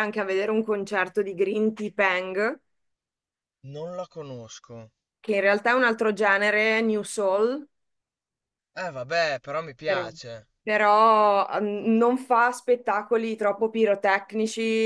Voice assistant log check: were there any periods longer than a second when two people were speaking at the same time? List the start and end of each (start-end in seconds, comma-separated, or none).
none